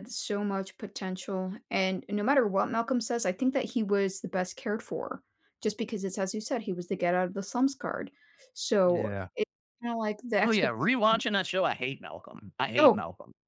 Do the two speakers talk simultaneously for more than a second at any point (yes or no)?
no